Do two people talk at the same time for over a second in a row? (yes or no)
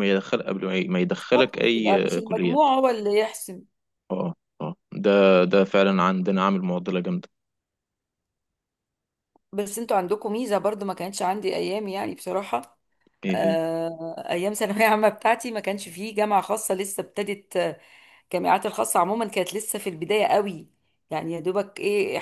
yes